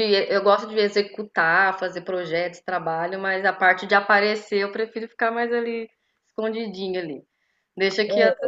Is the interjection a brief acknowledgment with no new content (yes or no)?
yes